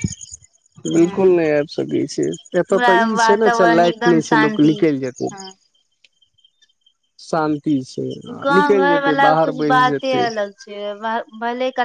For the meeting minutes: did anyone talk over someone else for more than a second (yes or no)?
yes